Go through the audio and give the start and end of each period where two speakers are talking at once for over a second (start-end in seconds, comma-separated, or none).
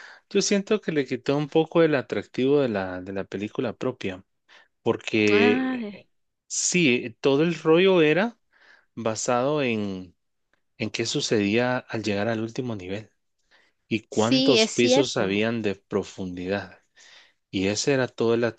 14.1-15.4